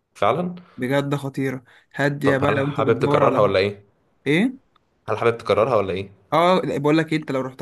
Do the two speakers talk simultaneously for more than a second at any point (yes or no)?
yes